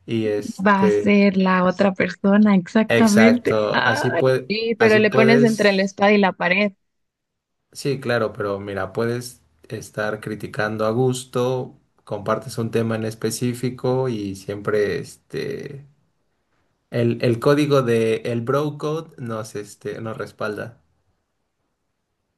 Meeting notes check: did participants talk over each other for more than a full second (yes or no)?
yes